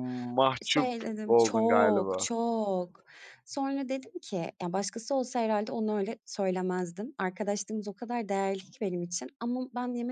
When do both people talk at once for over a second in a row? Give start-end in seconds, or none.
0.6-2.3